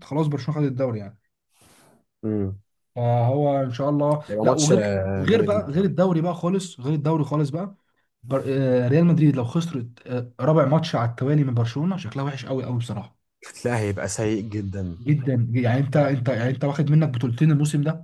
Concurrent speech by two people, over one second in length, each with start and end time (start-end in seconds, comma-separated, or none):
4.3-5.8